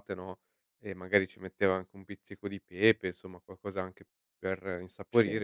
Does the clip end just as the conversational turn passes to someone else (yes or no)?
no